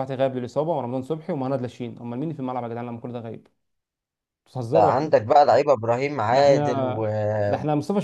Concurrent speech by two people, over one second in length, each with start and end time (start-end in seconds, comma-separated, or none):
none